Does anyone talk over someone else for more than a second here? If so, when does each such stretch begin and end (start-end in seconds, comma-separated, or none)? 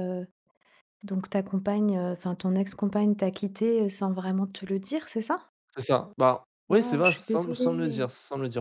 6.7-8.0